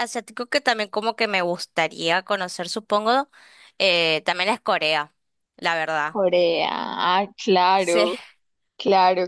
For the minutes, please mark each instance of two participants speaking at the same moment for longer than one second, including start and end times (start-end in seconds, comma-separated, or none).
none